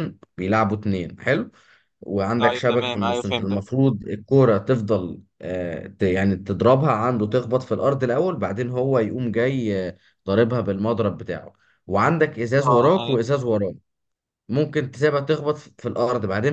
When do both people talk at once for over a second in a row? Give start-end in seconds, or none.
2.4-3.6